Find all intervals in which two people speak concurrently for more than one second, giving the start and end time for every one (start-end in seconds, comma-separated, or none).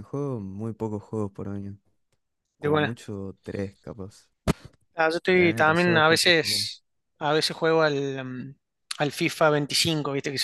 5.3-6.7